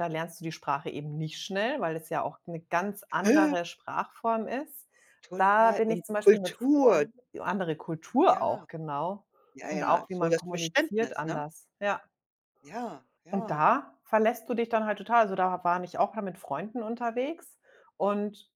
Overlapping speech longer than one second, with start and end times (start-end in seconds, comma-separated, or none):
5.4-7.1, 9.7-11.4